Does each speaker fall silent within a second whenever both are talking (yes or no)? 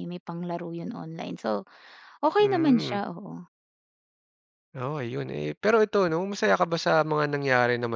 yes